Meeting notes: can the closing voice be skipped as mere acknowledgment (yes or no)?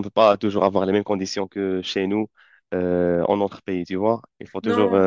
yes